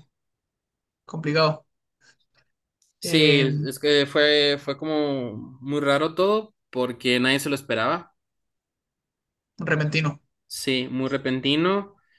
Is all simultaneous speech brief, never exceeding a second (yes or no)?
yes